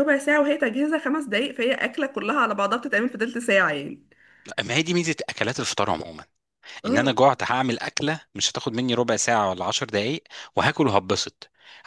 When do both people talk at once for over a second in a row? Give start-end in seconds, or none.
none